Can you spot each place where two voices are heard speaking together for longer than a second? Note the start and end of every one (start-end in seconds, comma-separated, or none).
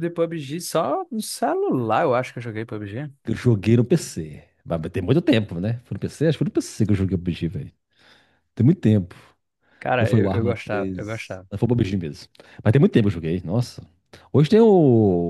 10.0-11.5